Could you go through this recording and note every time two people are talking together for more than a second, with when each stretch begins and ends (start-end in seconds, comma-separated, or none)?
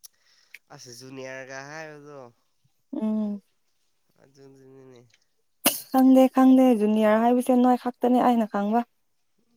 none